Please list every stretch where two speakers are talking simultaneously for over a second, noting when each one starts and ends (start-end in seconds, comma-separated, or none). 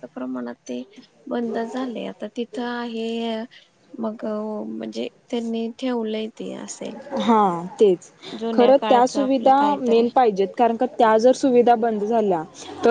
8.5-10.1